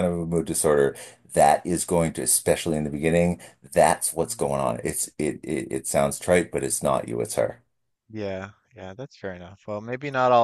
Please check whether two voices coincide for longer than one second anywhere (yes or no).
no